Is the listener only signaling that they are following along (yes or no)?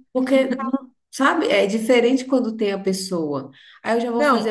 yes